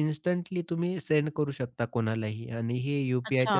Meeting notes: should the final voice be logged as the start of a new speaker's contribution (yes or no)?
yes